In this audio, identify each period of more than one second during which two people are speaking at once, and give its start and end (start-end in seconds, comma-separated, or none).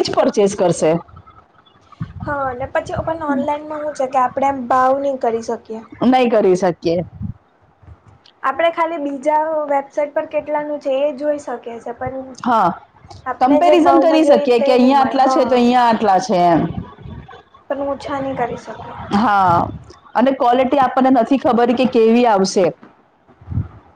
13.4-15.5